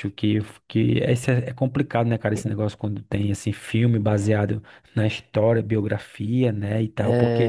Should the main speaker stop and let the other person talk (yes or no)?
yes